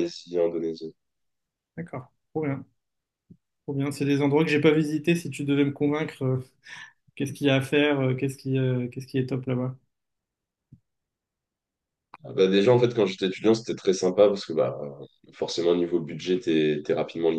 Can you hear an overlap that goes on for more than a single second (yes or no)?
no